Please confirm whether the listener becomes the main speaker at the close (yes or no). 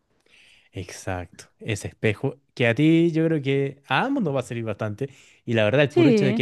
no